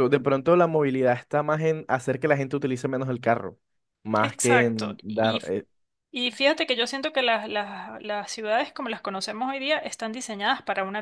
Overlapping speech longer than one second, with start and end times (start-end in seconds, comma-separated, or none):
4.1-5.4